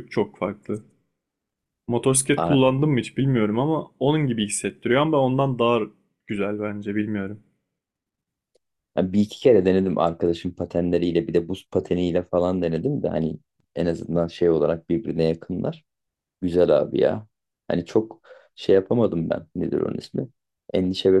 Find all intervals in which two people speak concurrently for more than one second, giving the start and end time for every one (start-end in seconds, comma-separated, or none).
none